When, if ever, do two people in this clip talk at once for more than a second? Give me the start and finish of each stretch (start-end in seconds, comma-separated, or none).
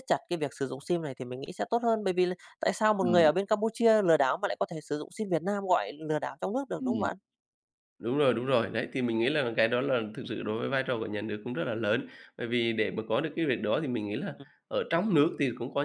none